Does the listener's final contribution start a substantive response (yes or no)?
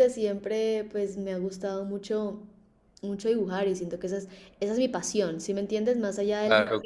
no